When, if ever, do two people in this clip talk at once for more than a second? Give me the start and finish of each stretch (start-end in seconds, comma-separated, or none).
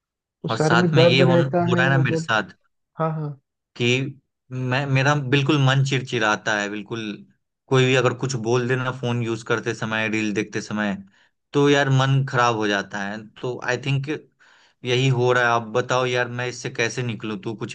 0.5-2.3